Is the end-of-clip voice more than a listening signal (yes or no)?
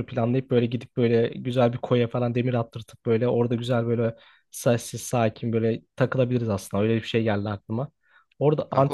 no